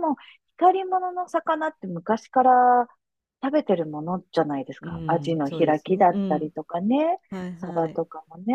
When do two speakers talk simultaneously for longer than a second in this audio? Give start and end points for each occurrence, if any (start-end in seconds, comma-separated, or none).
4.8-6.5